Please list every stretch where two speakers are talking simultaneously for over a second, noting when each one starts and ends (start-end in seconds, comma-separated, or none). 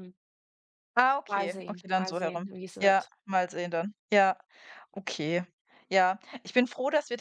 1.3-3.1